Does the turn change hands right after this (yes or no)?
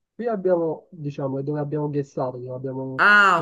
yes